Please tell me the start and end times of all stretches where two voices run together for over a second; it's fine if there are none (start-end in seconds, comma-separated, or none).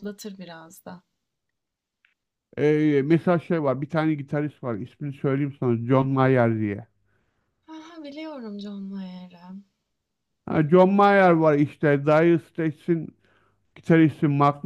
none